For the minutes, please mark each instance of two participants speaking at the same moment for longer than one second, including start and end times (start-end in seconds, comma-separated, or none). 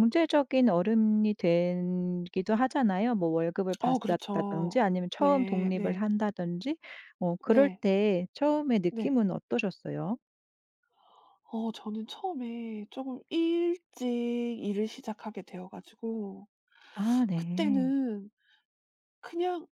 3.8-6.0